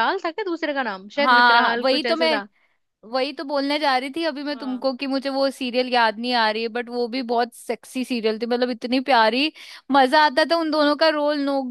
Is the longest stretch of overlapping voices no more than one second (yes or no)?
no